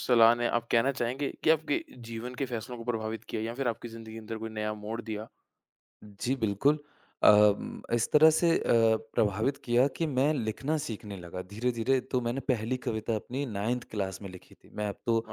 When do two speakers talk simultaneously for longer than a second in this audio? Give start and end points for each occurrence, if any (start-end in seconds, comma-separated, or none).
none